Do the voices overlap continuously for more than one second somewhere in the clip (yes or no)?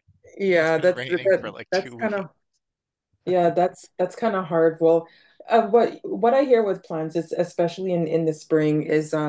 yes